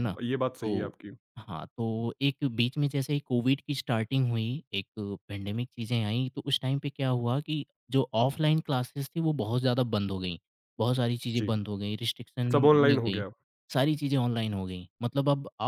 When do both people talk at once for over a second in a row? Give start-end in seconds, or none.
none